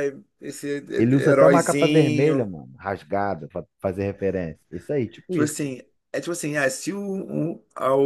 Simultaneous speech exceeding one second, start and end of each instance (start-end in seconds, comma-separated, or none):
1.1-2.5